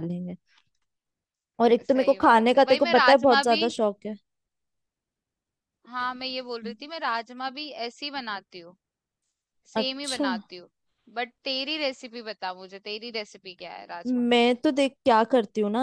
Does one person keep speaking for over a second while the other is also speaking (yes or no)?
yes